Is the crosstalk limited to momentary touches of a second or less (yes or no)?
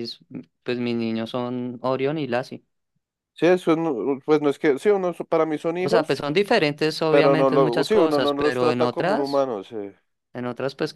no